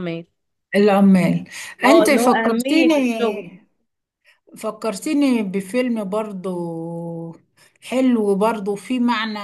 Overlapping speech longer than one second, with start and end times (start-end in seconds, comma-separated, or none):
1.9-3.0